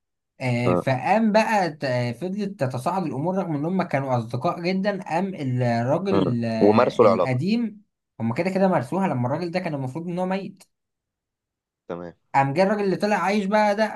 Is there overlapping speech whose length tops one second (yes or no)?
yes